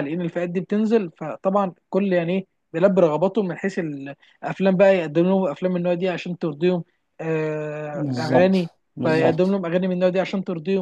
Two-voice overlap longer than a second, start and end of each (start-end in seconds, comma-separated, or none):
7.9-9.5